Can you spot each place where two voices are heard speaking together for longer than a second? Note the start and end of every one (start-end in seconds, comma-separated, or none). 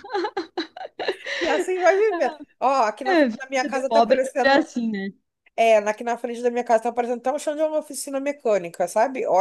3.0-4.7